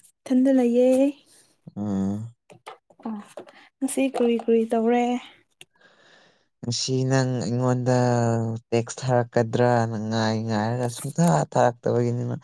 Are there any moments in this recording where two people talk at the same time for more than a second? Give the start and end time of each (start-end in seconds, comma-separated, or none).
none